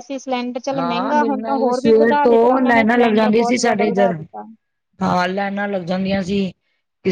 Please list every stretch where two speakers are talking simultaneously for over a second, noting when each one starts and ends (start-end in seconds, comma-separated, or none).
0.8-4.2